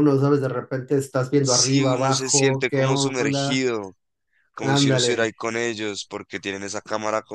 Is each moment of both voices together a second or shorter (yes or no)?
no